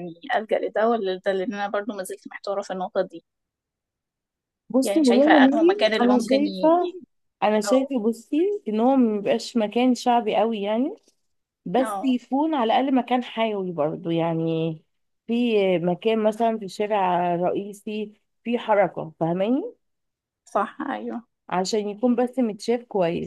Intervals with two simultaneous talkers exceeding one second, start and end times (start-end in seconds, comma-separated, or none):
4.8-6.9